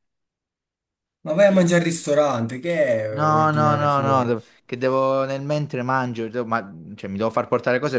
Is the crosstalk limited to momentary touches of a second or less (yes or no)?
no